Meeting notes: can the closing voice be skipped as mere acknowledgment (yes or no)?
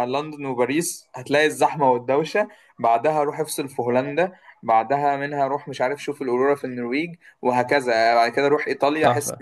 no